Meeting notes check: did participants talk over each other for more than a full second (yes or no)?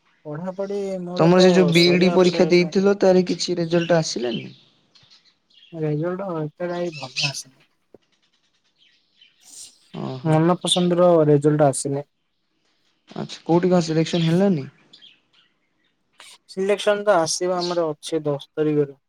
yes